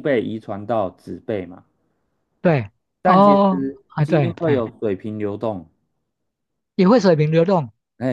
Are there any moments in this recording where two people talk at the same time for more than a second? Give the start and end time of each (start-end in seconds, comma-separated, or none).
3.0-4.7